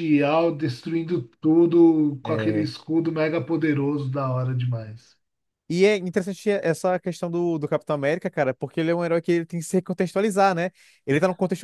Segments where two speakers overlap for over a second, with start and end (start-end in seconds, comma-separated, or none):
none